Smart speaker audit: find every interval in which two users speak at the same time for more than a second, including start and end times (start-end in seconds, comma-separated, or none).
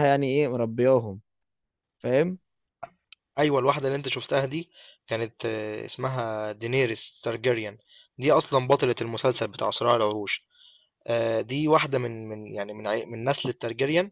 none